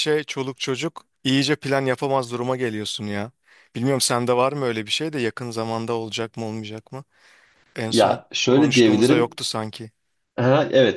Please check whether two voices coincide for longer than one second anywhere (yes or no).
yes